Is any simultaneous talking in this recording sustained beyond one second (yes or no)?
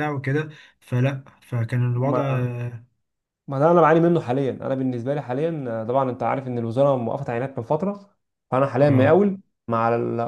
no